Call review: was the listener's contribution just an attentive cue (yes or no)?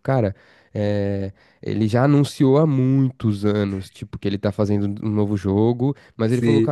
yes